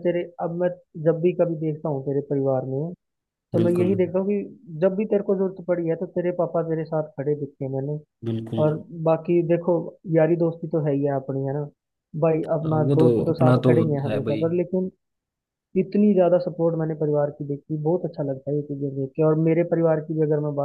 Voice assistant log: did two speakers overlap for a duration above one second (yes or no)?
yes